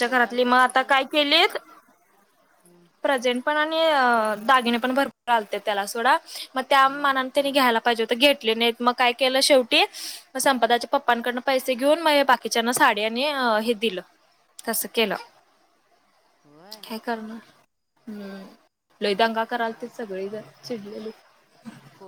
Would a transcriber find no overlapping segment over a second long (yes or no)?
yes